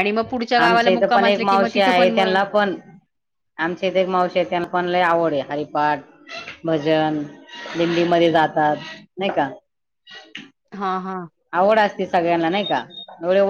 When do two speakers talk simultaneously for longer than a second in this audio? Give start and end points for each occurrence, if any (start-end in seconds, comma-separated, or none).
0.6-2.4